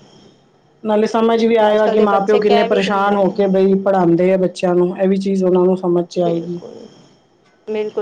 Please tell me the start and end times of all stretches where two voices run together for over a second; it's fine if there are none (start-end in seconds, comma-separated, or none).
1.7-3.3